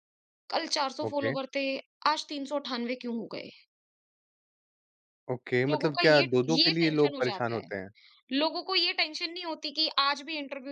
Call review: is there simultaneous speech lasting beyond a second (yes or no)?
yes